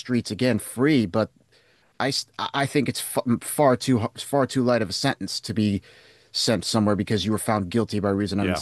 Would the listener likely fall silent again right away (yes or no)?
yes